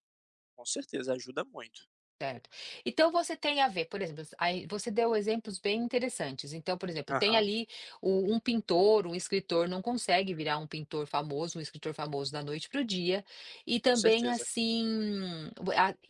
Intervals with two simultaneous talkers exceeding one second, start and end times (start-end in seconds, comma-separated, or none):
none